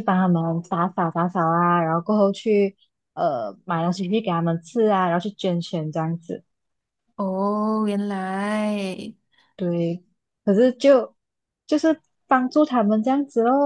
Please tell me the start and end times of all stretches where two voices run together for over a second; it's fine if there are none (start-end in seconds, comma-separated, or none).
none